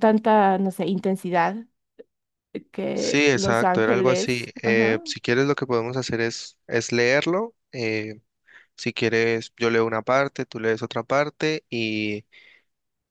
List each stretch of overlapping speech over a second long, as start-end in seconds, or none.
2.9-5.0